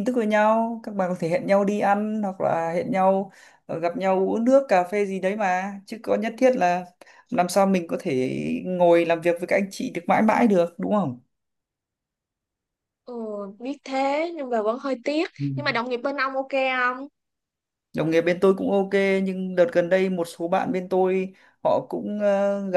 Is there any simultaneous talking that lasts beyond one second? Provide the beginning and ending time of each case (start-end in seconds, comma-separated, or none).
none